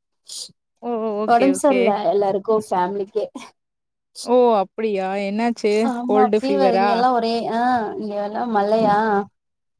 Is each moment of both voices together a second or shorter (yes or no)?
yes